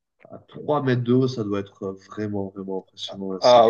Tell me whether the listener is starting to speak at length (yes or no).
yes